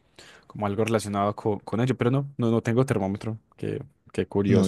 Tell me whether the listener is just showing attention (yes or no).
no